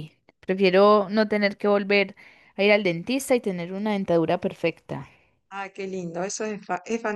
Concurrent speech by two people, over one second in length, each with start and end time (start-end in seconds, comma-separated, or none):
none